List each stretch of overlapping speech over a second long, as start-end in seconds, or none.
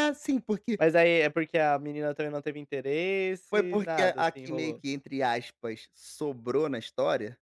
3.5-4.8